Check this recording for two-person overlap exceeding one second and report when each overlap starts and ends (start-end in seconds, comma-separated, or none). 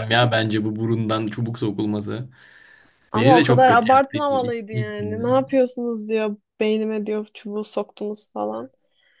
3.1-5.2